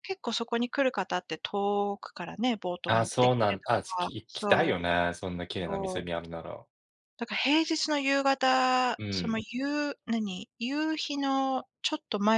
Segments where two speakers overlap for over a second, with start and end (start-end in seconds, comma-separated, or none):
2.9-4.8